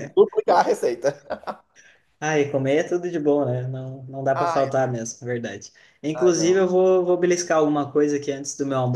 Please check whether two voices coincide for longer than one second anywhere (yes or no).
no